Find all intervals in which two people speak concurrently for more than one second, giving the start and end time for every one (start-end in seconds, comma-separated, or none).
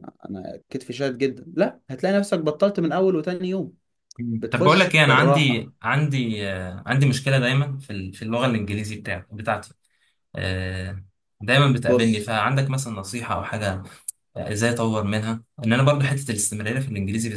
4.4-5.7